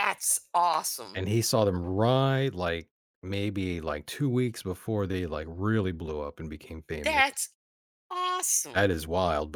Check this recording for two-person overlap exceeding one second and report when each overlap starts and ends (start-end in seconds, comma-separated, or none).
none